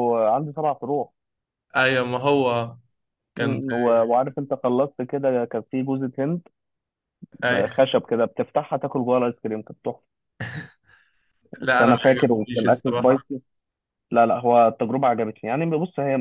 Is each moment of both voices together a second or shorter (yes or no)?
no